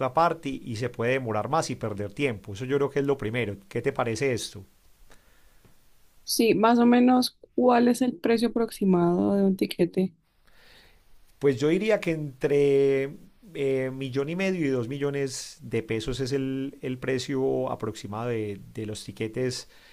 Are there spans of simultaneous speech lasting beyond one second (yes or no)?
no